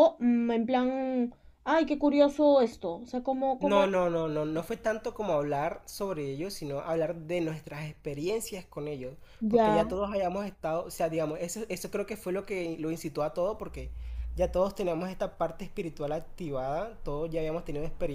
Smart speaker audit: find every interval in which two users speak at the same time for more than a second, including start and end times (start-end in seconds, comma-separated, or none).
none